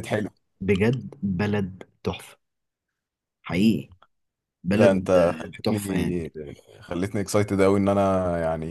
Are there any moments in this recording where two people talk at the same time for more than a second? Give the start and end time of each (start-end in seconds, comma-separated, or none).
4.7-6.2